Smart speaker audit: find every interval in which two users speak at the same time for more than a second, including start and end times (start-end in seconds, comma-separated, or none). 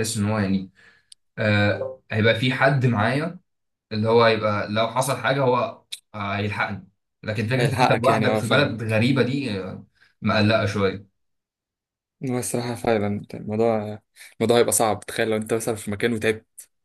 7.6-9.0